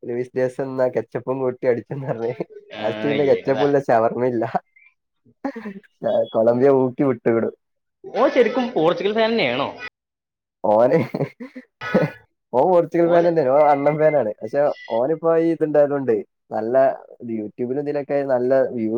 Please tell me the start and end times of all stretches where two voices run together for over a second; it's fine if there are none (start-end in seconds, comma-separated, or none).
none